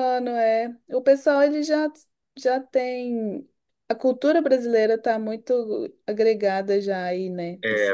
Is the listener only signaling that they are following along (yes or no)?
no